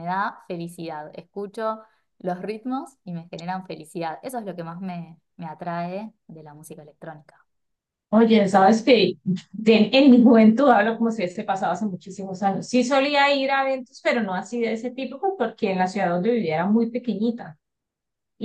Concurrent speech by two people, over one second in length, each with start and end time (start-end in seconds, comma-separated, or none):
none